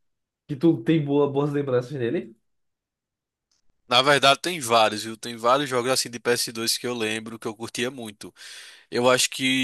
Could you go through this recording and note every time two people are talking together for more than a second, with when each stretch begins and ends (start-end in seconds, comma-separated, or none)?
none